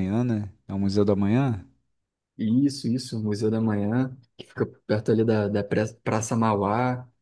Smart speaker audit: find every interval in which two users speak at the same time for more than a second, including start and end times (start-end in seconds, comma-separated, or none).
none